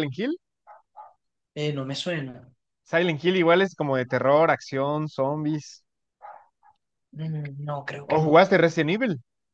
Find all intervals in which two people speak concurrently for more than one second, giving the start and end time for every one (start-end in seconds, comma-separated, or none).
none